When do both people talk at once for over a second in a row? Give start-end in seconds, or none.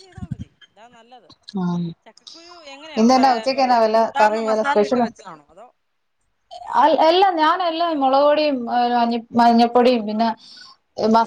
3.0-5.0